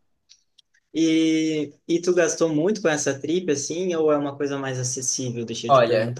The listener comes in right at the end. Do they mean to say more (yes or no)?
yes